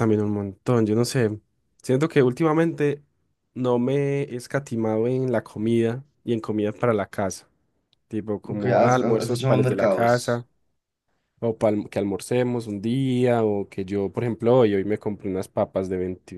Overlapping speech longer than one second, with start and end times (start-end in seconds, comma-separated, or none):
8.5-10.4